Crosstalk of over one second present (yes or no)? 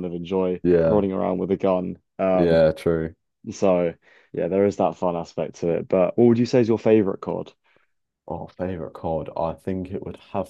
no